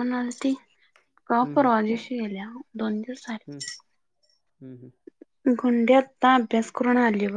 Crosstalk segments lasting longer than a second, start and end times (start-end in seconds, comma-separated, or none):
none